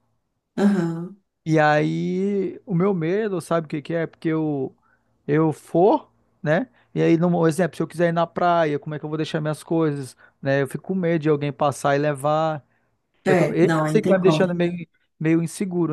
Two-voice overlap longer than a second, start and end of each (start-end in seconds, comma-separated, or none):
13.2-14.5